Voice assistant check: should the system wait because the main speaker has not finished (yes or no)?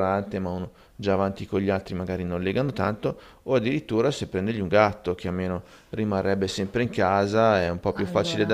yes